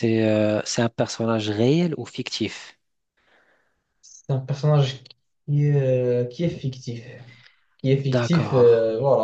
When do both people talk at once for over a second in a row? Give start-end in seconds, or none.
none